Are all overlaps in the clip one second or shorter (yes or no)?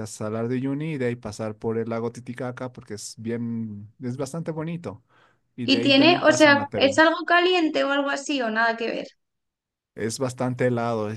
no